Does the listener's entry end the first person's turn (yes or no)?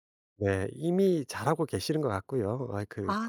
no